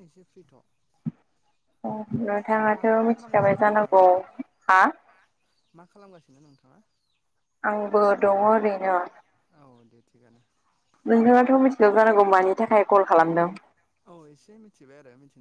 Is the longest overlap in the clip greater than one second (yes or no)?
yes